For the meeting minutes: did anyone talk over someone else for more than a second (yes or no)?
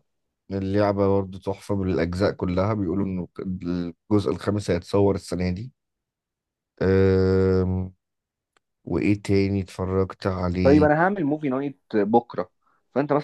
no